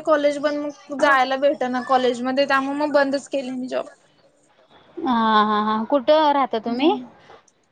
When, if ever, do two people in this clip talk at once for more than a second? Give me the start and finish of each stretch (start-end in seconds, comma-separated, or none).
none